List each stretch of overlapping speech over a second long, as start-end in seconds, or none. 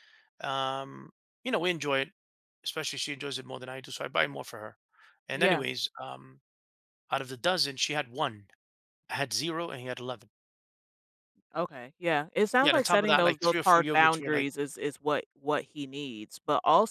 12.6-14.5